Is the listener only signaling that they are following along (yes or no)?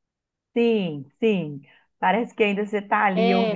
no